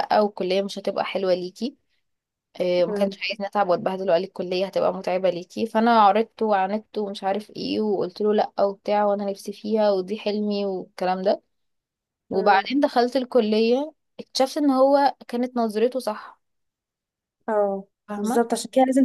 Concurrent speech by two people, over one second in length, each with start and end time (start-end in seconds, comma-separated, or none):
none